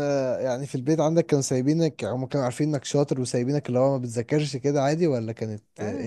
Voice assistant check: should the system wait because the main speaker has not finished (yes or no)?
no